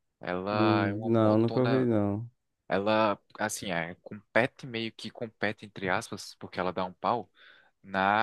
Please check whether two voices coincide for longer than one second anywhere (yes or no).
yes